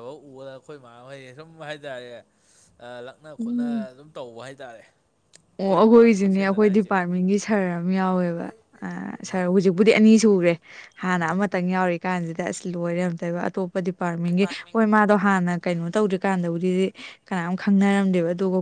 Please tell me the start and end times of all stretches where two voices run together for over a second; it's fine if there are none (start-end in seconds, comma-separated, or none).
5.6-6.9